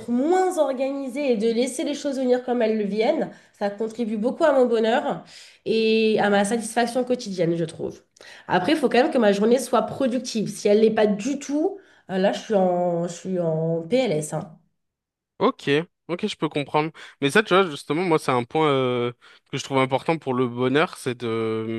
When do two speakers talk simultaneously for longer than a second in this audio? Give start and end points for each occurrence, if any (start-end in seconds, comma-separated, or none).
none